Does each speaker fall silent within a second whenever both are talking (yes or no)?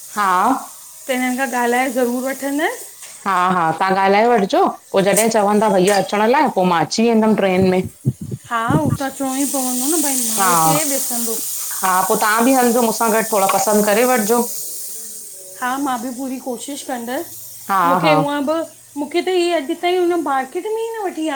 yes